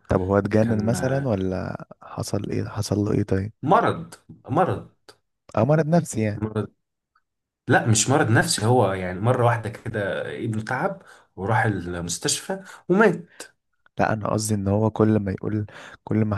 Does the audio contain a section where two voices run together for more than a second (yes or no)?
no